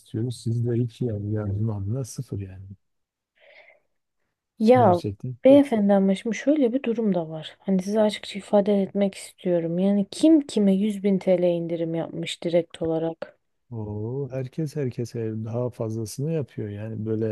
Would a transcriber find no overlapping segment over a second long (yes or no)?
yes